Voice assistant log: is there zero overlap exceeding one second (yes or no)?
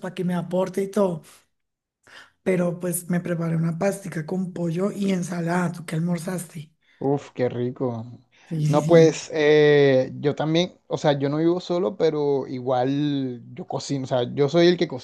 yes